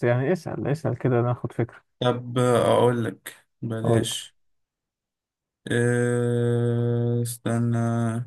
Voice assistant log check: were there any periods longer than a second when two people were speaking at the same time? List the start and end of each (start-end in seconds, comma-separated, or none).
none